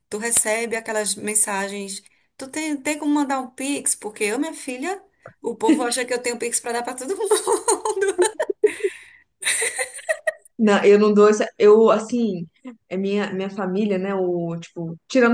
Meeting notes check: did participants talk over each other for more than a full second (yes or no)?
no